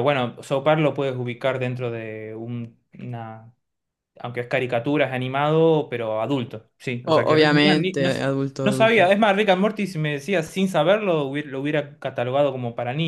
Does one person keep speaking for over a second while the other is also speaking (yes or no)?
yes